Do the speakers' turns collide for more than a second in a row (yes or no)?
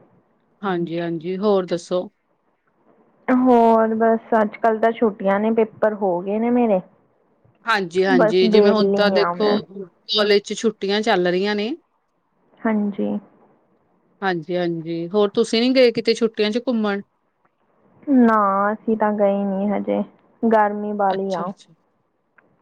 yes